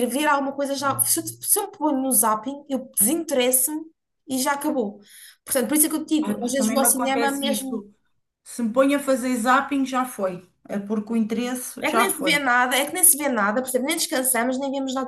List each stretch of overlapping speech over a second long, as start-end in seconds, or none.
6.2-7.8